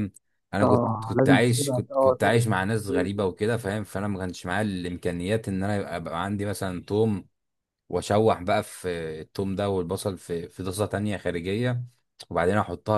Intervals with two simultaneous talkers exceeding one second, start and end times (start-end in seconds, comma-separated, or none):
0.6-2.2